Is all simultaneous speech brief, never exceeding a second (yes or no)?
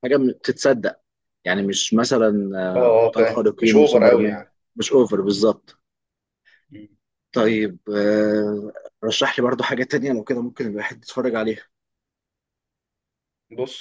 no